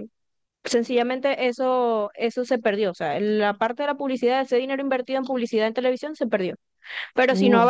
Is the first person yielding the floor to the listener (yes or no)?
no